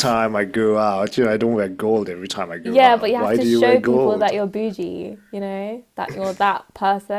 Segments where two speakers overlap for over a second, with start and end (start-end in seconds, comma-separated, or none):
2.6-4.3